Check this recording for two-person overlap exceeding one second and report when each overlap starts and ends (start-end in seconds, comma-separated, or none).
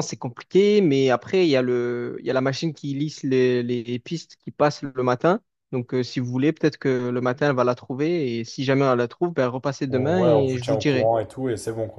9.9-11.1